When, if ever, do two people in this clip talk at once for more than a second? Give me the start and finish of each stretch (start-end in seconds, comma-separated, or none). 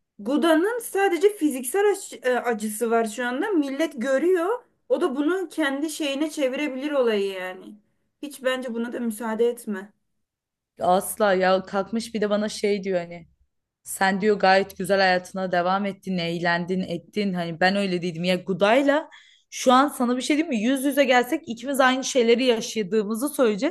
none